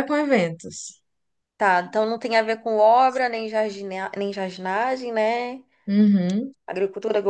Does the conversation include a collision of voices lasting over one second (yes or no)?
no